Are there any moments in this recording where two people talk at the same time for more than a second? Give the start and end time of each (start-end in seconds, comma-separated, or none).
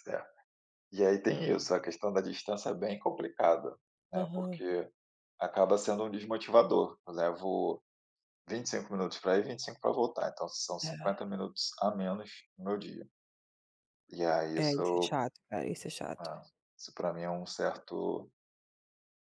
none